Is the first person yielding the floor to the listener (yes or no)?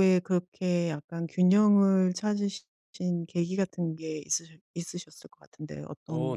yes